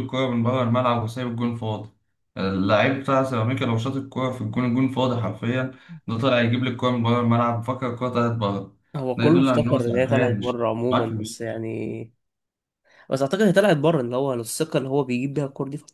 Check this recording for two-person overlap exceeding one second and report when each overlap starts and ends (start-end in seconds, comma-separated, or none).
9.2-11.4